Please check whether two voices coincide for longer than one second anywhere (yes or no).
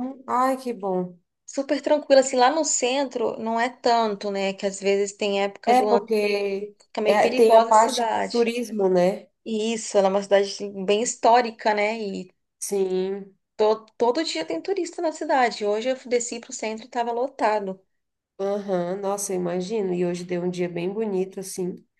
yes